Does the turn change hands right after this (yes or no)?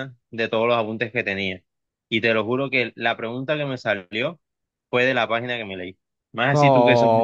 yes